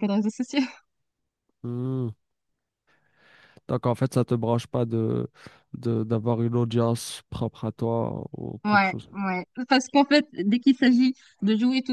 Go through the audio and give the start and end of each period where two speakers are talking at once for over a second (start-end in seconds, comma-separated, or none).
none